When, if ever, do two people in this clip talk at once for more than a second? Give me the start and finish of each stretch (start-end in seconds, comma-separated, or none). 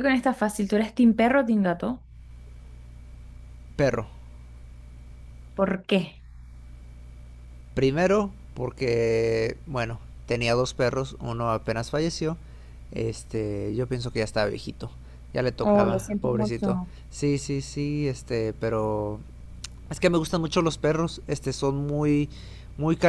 15.6-16.9